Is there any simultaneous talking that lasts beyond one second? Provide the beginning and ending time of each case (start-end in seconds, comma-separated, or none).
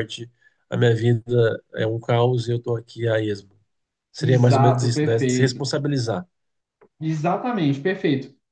4.2-5.7